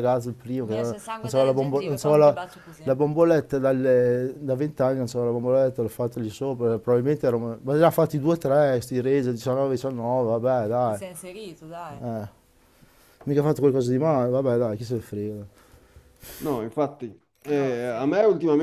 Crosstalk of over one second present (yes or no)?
no